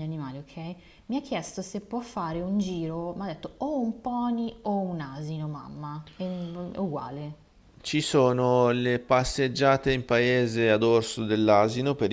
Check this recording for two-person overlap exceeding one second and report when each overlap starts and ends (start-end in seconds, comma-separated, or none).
none